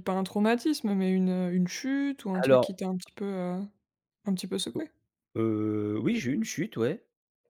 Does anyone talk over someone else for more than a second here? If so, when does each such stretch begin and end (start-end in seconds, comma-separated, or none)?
none